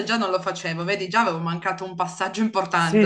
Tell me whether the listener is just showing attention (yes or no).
no